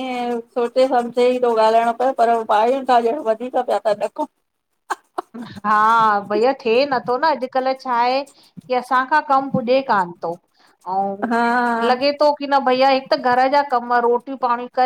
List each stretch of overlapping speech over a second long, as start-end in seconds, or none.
none